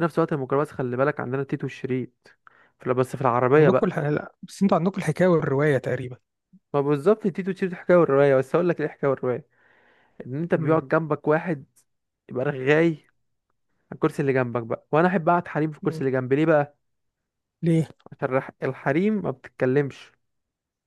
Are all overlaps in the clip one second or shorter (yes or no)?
yes